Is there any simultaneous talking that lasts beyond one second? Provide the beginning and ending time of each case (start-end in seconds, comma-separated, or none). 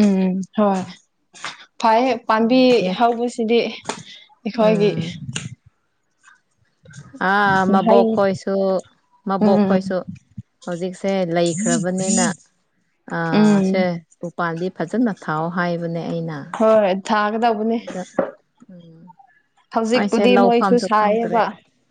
20.0-21.4